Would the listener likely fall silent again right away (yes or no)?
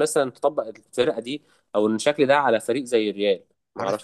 no